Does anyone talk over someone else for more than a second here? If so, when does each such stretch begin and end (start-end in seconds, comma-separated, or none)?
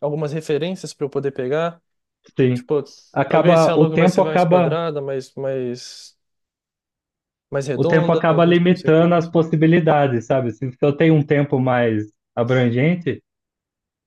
3.3-4.8, 7.7-9.4